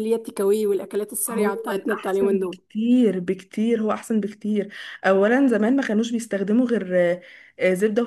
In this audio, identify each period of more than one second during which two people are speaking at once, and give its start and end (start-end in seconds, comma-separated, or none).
1.3-2.6